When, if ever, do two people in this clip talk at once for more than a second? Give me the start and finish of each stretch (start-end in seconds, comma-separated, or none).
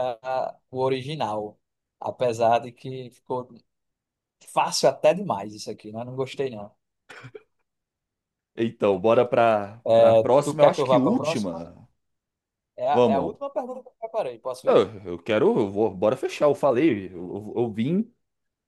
9.8-11.6